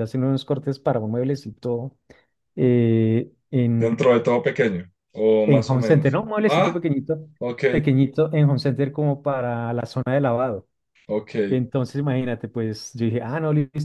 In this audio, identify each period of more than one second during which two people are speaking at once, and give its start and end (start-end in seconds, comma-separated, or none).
5.5-6.9